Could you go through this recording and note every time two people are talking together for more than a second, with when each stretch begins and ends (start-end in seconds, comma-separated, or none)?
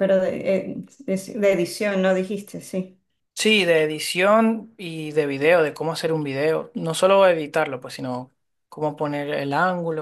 none